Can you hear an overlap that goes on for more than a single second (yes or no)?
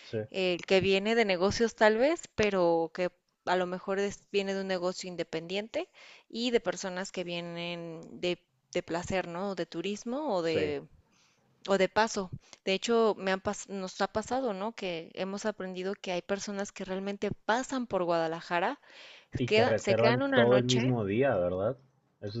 yes